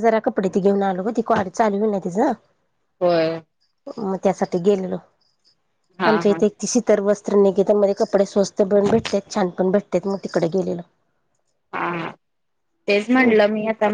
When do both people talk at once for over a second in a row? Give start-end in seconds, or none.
none